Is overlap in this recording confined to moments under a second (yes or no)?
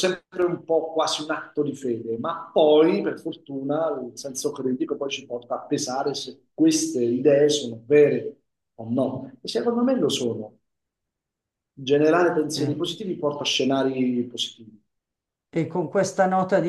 yes